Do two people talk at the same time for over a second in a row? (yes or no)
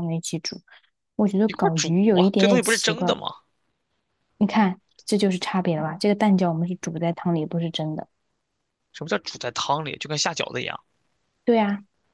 yes